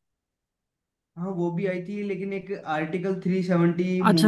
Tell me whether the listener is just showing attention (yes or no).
no